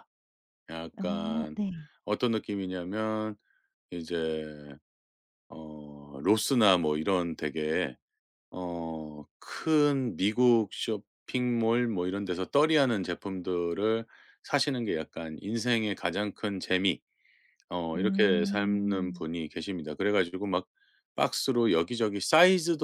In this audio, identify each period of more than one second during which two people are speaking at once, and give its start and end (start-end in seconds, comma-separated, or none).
17.9-19.2